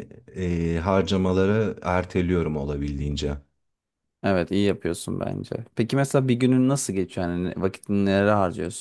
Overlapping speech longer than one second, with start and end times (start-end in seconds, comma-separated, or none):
none